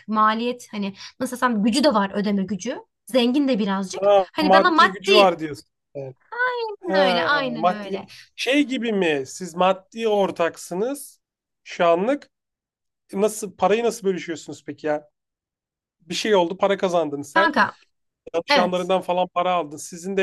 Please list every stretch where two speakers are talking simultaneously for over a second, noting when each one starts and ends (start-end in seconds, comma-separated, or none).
3.9-5.4, 6.8-8.1